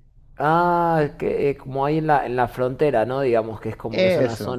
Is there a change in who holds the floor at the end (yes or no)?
no